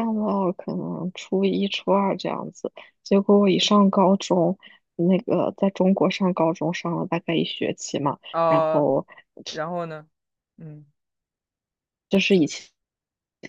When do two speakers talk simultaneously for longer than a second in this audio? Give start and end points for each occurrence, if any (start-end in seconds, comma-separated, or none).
none